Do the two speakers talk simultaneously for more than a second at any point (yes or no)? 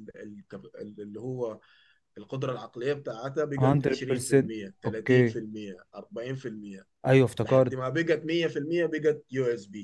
yes